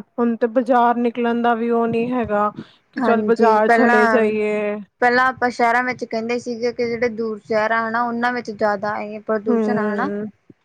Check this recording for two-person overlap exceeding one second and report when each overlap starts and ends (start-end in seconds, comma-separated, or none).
3.0-4.2